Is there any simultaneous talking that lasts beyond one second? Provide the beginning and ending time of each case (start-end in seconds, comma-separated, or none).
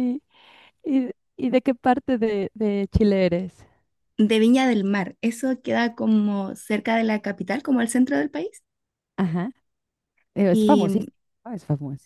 none